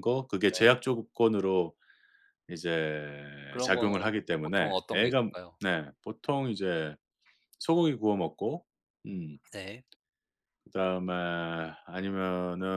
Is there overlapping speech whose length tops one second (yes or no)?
yes